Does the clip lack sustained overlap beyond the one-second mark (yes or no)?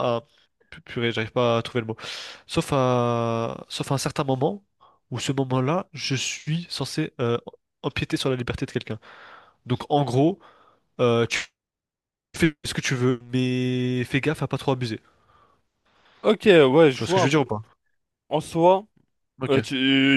yes